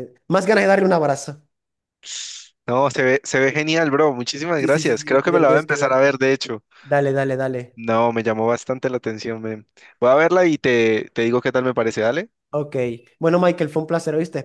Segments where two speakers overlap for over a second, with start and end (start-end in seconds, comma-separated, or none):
4.6-6.1